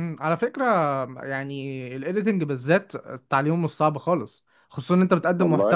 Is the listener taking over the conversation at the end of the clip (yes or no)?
no